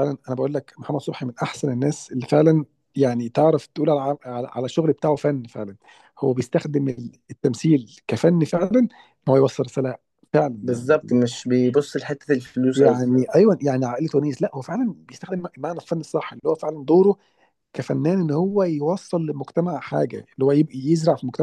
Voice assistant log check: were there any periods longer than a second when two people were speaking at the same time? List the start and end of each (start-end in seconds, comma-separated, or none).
none